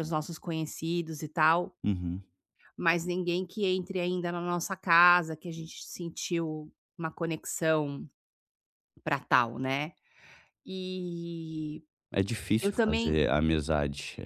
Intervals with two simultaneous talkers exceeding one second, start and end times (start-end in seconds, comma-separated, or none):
none